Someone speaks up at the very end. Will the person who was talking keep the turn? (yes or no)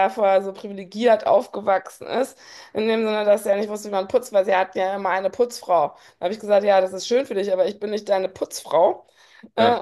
yes